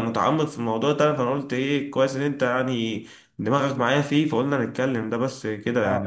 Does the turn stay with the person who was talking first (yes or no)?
no